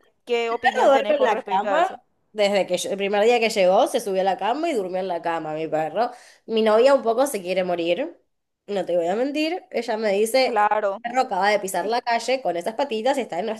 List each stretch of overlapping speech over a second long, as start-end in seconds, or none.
0.6-1.9